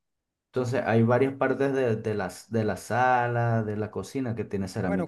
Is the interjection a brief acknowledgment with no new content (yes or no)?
no